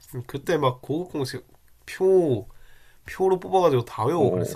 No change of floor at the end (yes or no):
no